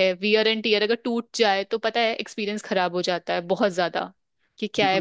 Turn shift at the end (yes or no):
yes